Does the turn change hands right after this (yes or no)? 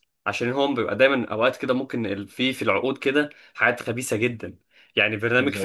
no